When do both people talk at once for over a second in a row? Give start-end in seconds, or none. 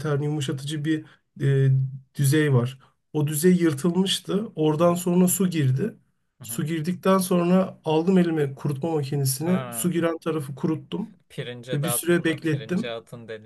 11.7-12.9